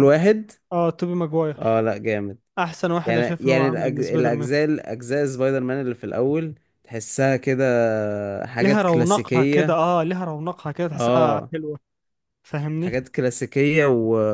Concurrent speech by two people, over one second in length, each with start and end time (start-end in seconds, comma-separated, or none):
3.0-4.5, 8.6-9.8